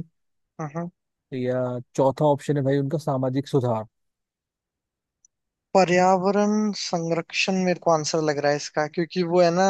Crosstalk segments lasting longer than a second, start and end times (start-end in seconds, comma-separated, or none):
none